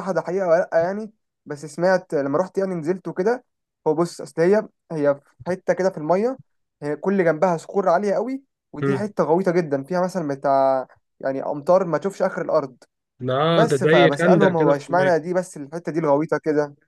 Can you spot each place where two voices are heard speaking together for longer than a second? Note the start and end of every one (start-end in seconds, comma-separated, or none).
13.5-15.2